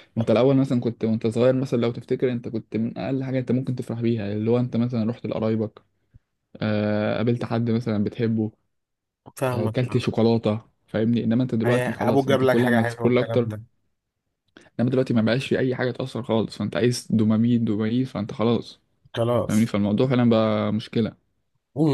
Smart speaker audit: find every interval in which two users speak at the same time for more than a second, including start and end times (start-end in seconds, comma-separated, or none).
11.7-13.5